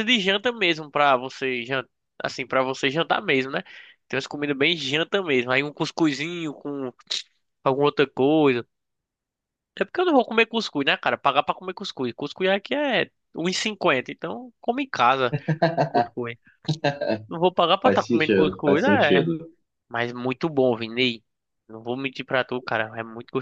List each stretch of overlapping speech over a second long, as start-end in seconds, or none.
17.8-19.3